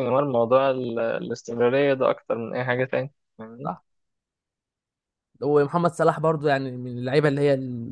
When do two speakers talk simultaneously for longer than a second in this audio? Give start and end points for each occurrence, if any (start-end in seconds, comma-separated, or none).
none